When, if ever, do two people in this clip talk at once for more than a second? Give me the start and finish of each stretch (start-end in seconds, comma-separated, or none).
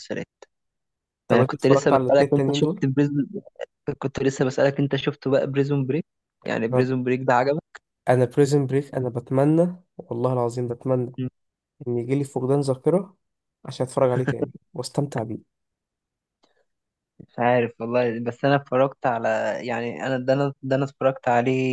1.3-2.8